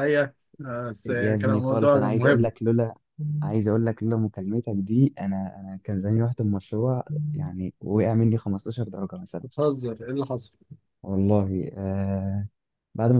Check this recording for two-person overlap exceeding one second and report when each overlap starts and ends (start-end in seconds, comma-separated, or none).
1.1-2.5